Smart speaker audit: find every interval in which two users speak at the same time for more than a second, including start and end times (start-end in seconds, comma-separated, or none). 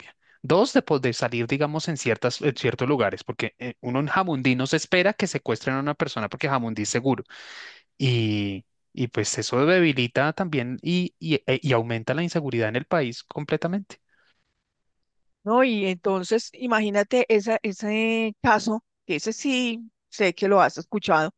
none